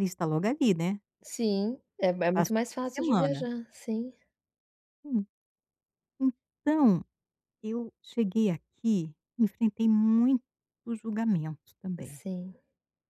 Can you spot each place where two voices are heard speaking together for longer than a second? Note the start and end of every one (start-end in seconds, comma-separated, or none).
2.2-3.5